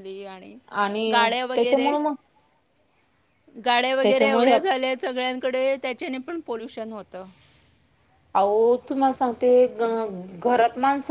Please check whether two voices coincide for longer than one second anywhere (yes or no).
no